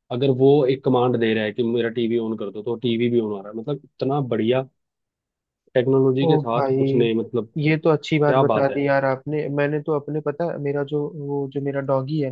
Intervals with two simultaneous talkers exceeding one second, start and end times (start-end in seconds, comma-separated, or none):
none